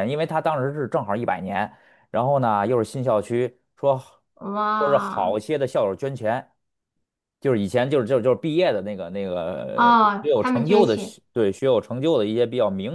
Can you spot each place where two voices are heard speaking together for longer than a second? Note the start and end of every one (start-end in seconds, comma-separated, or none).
9.7-11.1